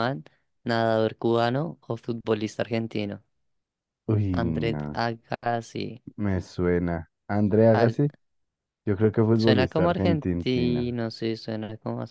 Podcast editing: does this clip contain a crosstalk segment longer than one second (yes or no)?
yes